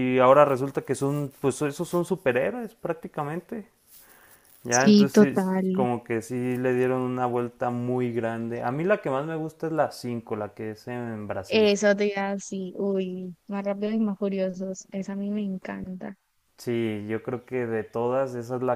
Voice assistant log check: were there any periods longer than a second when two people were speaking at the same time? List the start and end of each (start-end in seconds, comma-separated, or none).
4.7-5.9